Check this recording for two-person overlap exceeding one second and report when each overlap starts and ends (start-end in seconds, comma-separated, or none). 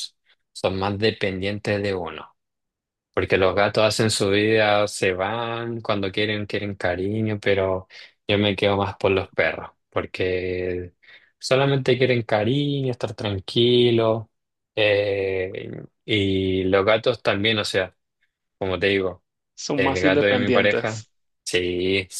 19.8-21.0